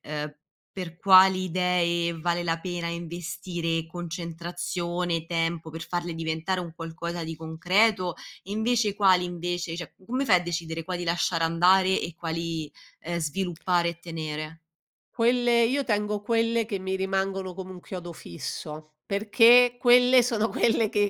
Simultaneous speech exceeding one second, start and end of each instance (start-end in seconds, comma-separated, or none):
none